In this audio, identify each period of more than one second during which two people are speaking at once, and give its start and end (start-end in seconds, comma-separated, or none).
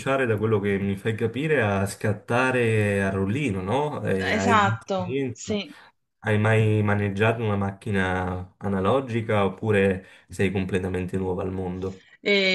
4.3-5.6